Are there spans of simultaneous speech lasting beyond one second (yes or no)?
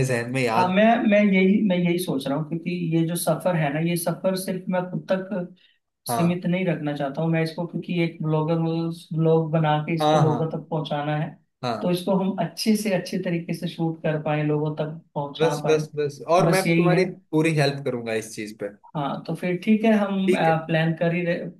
no